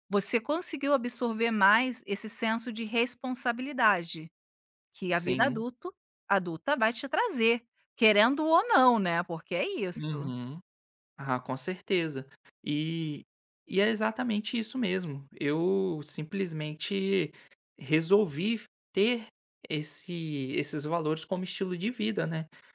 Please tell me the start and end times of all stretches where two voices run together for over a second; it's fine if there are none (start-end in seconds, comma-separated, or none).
none